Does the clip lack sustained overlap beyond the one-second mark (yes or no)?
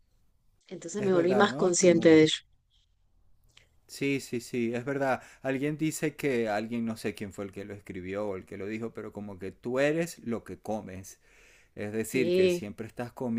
no